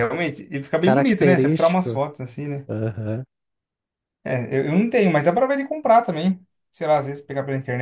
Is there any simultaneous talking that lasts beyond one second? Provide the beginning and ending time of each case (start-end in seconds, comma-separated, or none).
0.8-2.0